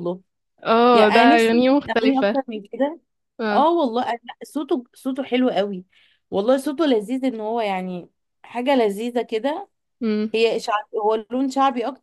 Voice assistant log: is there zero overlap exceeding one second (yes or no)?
no